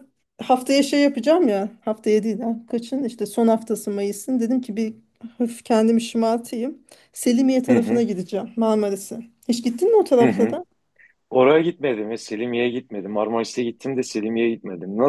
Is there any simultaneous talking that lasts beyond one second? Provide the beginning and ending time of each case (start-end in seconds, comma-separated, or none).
none